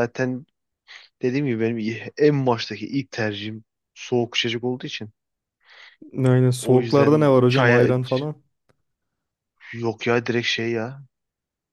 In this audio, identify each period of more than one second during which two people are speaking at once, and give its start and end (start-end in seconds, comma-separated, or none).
6.6-7.9